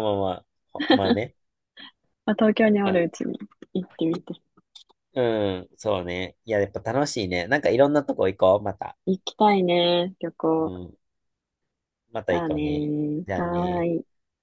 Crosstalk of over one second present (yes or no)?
yes